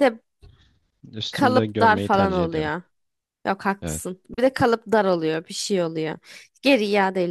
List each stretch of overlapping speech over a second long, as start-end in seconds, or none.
1.3-2.7